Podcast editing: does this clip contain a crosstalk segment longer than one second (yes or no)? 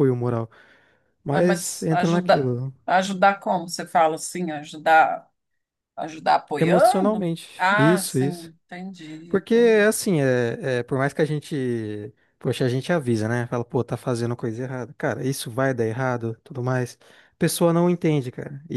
yes